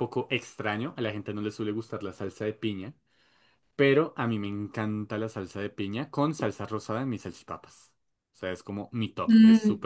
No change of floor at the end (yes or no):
no